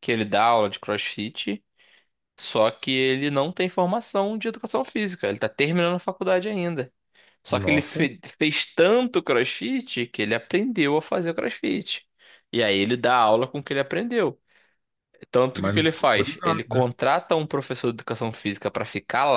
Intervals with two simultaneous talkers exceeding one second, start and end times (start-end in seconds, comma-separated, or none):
15.5-16.8